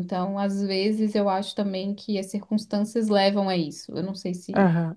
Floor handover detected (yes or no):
yes